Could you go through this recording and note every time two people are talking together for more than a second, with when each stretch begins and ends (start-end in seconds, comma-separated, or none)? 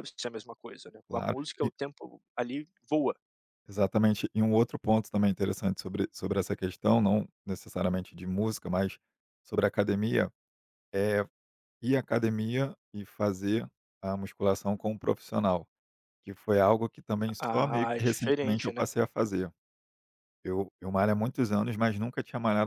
17.4-18.8